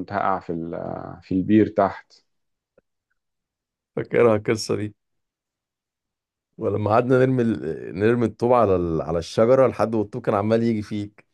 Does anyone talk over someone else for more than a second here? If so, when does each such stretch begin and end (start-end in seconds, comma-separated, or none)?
none